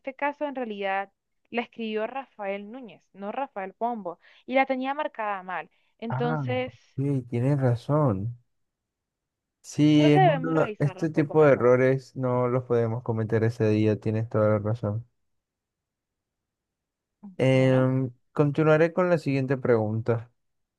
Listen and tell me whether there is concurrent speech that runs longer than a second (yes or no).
yes